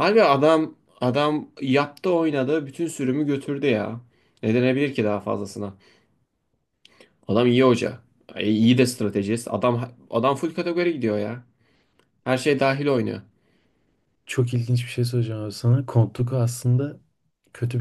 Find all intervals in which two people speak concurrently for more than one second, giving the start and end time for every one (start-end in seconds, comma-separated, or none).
none